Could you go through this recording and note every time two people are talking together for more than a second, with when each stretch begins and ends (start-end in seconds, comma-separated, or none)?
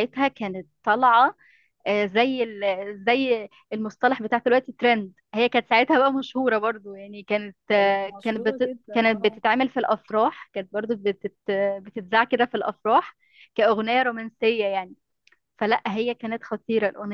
7.7-9.4